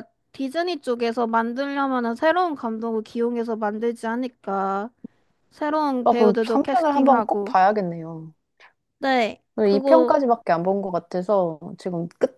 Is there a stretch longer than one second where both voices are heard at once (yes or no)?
yes